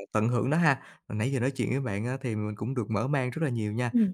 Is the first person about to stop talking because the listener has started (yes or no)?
no